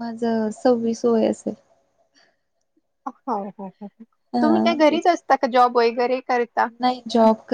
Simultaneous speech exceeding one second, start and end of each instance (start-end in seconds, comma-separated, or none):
none